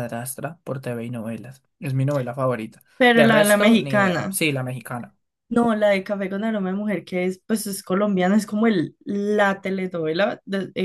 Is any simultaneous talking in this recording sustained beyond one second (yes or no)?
yes